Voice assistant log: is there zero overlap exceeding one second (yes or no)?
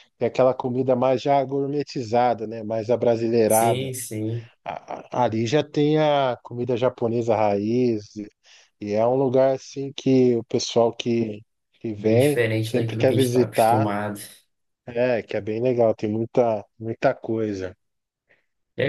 no